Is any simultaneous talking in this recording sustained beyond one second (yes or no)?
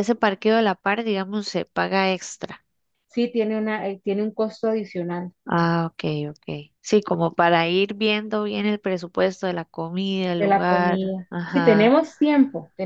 yes